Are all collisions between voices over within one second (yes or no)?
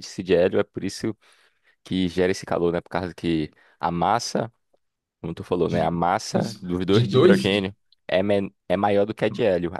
no